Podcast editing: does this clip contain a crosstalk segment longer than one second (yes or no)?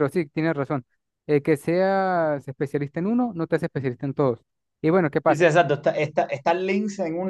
no